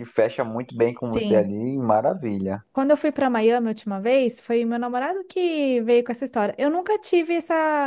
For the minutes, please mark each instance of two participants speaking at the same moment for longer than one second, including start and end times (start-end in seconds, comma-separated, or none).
none